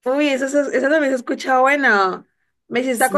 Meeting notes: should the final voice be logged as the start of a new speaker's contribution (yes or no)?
no